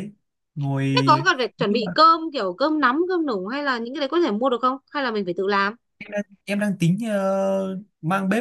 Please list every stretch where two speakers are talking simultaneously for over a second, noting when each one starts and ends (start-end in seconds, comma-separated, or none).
none